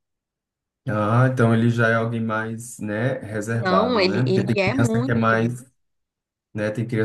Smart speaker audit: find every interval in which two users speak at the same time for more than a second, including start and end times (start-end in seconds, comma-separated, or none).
3.5-5.4